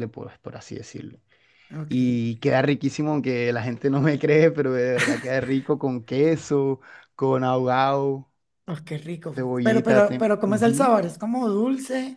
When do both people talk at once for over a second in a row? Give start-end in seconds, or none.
9.3-10.9